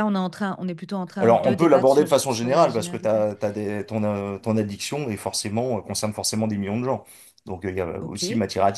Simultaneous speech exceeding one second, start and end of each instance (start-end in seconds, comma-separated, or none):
1.2-3.2